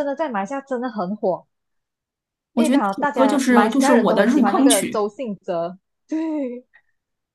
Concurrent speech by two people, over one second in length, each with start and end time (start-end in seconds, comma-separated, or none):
2.5-5.1